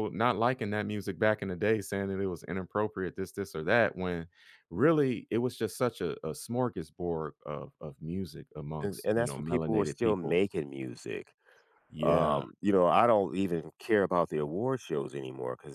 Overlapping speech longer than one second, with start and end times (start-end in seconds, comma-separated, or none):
8.8-10.4